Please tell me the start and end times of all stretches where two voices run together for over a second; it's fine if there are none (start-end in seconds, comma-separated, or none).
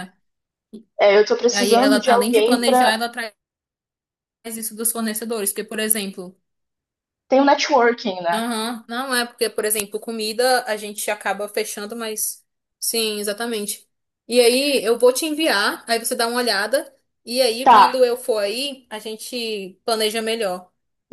1.5-3.0